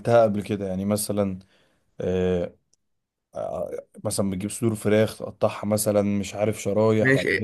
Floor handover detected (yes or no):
yes